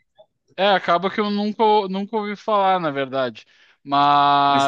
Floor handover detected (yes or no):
no